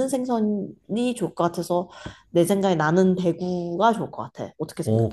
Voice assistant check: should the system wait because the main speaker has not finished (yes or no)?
no